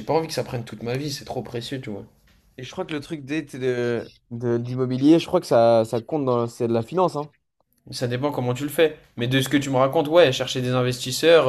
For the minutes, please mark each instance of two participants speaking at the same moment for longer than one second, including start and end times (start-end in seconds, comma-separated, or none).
none